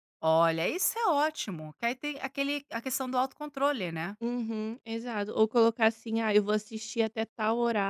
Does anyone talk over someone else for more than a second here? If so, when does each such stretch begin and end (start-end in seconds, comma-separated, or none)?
none